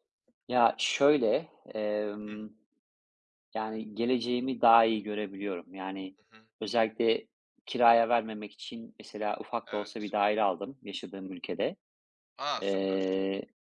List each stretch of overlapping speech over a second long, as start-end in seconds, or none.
none